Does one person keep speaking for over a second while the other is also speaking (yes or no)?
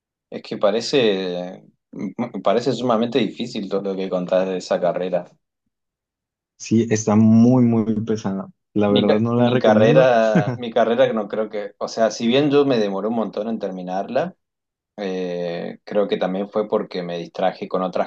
yes